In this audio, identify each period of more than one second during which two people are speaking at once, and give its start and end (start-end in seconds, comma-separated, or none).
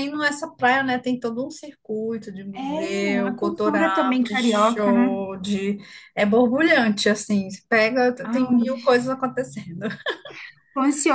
2.5-5.2